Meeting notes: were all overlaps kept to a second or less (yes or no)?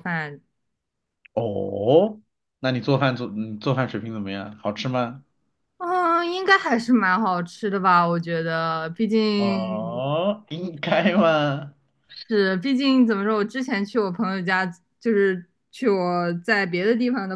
yes